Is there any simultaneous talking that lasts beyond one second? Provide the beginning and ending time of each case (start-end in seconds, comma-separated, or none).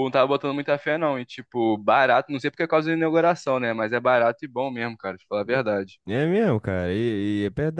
none